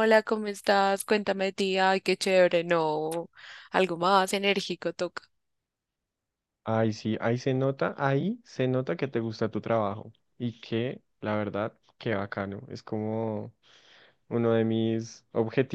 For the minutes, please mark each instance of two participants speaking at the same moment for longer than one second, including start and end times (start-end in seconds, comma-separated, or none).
none